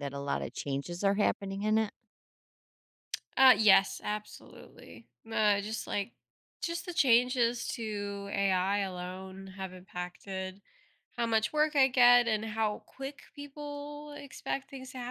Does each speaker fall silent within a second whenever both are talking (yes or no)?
yes